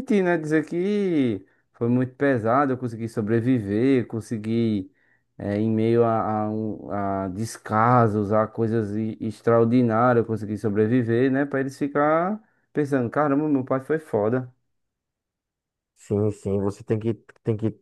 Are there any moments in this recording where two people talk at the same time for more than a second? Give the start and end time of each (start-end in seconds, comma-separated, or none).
none